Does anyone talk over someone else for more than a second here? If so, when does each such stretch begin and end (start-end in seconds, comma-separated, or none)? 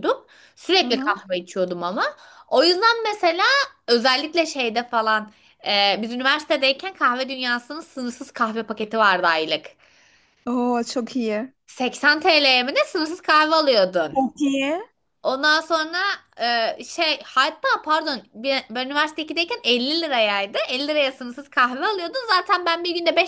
none